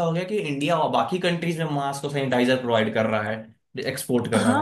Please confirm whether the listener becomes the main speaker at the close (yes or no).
yes